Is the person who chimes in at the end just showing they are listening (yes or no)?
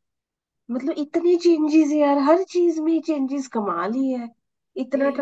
yes